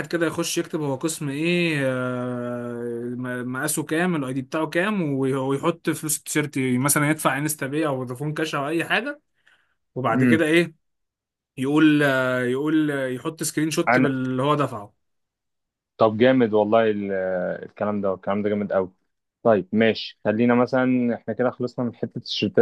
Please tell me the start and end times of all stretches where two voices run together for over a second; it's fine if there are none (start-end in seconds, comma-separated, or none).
none